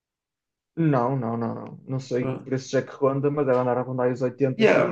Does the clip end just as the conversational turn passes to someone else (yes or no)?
yes